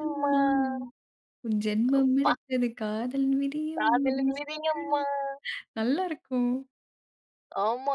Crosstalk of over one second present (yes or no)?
no